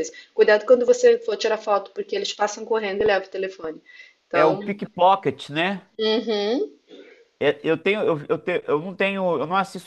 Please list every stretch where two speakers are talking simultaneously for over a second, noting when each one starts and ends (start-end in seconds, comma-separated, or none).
none